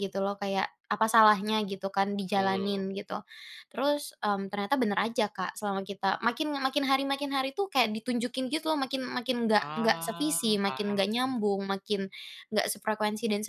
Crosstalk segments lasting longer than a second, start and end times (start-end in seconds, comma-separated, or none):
9.6-11.0